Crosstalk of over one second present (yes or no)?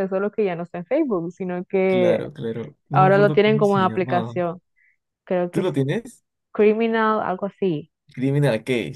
yes